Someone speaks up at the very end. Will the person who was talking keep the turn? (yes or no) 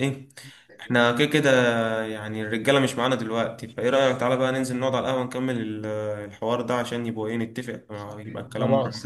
no